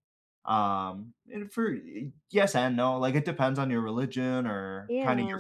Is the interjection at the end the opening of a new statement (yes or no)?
no